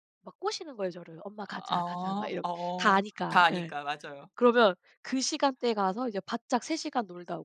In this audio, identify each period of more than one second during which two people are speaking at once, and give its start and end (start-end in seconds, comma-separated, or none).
1.4-3.7